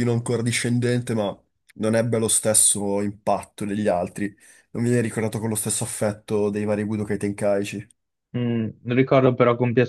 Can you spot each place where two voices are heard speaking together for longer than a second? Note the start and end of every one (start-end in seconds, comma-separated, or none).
none